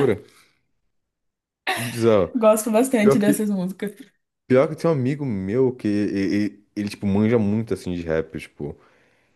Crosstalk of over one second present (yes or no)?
no